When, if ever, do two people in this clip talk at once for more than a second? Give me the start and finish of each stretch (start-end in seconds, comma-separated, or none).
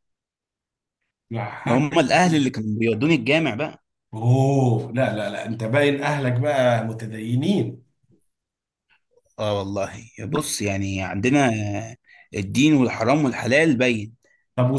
none